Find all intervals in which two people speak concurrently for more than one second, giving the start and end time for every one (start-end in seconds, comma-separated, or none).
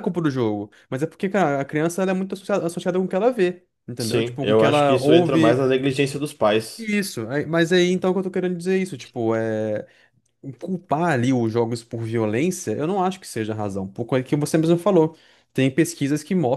4.0-5.7